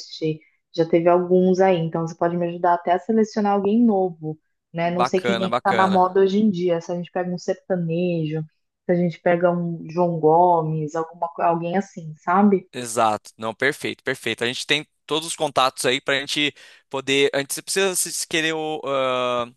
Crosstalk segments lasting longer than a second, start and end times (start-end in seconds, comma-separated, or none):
4.8-6.2